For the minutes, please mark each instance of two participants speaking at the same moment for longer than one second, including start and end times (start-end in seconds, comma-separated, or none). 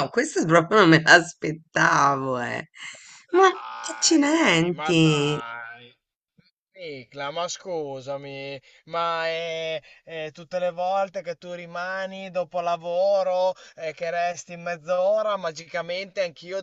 3.9-5.4